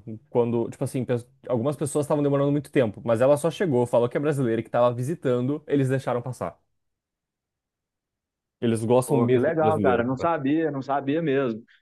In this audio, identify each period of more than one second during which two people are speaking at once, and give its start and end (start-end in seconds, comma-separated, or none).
9.0-10.3